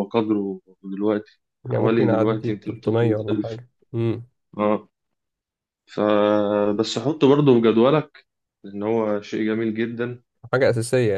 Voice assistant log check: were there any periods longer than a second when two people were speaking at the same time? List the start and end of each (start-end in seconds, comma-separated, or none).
1.6-3.6